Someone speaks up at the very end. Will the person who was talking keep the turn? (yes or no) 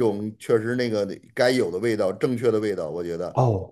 no